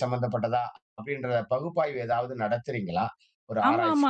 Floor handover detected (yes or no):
yes